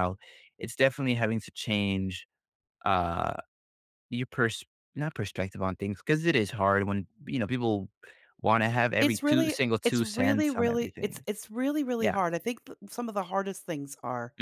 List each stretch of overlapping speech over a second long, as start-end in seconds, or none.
9.0-11.2